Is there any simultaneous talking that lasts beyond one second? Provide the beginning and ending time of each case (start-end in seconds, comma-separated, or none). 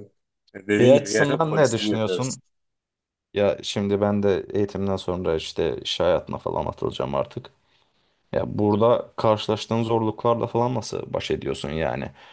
0.8-2.4